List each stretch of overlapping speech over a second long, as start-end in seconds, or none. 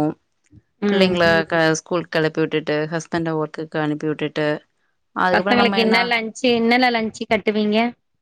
none